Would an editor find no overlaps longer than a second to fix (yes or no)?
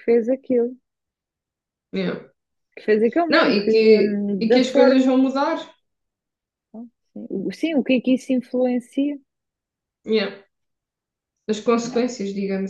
no